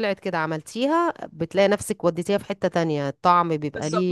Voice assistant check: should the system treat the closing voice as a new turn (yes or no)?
yes